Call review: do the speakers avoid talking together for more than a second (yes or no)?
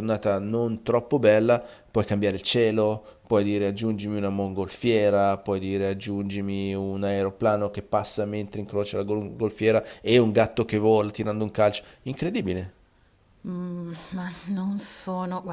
yes